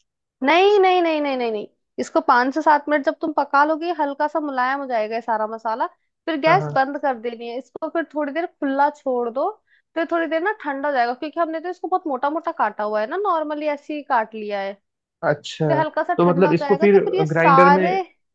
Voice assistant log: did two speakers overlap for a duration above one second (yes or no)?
yes